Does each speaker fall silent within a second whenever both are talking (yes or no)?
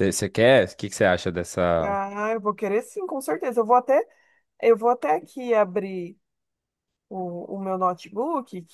yes